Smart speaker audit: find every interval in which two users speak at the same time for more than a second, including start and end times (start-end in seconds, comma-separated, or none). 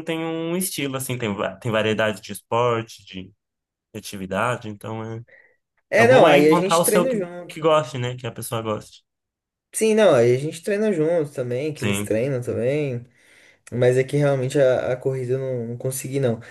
6.0-7.6